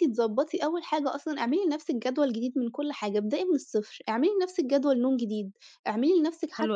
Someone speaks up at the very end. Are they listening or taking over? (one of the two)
listening